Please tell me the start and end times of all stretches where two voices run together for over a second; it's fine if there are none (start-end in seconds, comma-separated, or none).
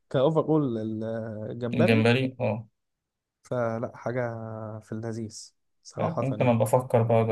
none